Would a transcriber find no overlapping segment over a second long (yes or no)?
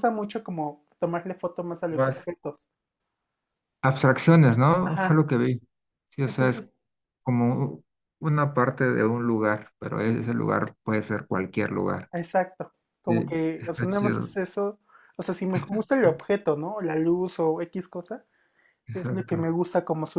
no